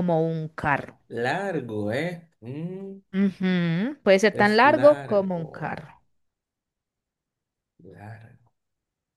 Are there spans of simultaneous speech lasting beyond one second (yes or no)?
yes